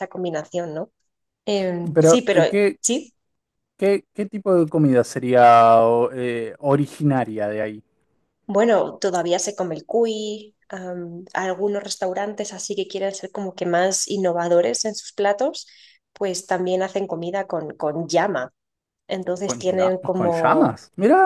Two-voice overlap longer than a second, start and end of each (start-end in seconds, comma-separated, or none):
19.4-20.8